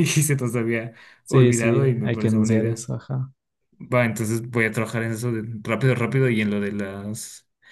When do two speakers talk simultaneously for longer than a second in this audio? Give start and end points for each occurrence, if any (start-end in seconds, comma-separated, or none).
1.2-2.8